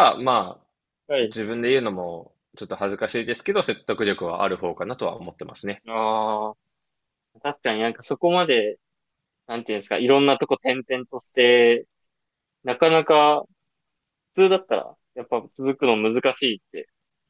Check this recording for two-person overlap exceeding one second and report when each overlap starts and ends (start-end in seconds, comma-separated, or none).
none